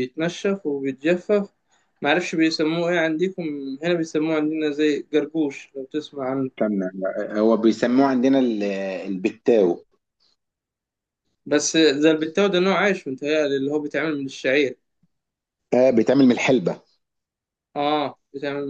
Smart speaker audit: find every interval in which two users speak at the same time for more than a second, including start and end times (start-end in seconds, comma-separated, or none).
none